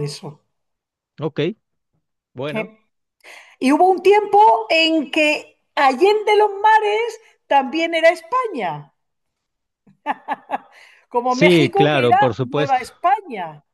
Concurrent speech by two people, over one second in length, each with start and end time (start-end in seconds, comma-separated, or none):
11.3-12.8